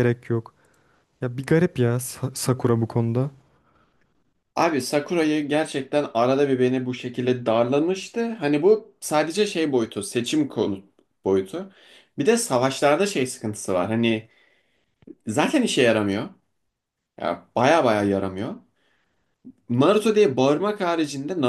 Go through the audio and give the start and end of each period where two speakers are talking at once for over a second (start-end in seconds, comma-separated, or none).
none